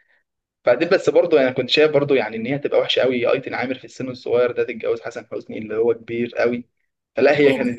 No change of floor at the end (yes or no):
yes